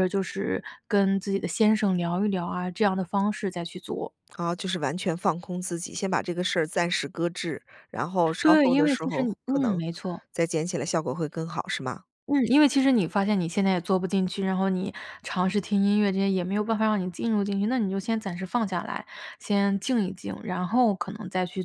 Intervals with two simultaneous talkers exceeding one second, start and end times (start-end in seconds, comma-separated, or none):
8.4-9.8